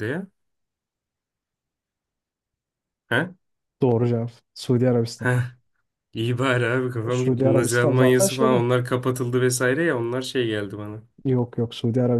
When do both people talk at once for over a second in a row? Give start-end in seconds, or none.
7.1-8.6